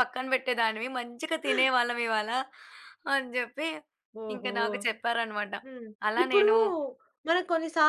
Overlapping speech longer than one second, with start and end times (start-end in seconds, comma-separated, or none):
none